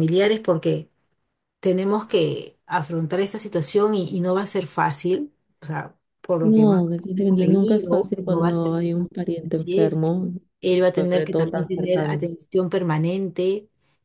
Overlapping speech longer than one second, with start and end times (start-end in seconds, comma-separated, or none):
6.4-10.0, 10.8-12.3